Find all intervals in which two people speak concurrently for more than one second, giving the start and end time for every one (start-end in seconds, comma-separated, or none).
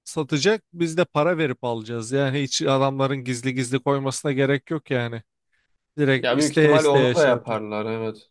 6.2-7.6